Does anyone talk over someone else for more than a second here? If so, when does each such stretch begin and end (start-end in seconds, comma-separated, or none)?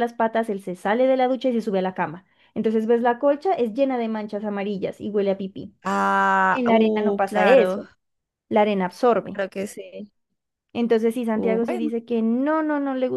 6.5-7.8